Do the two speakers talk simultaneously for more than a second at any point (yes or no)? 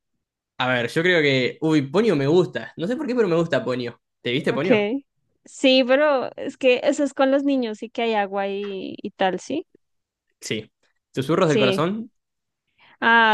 no